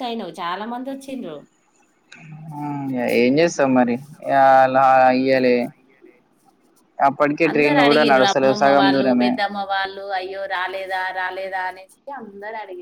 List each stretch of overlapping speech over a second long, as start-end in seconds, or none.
7.5-9.3